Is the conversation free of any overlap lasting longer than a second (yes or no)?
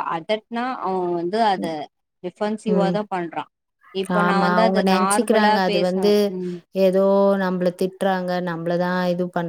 no